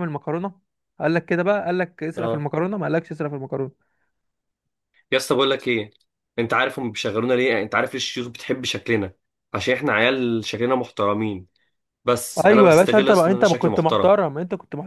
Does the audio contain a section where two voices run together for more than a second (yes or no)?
yes